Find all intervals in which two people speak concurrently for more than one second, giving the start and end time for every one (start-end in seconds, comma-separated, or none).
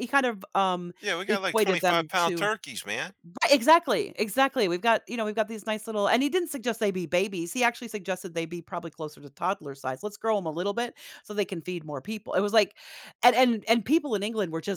1.3-2.5